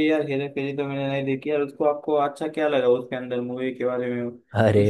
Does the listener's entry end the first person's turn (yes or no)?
yes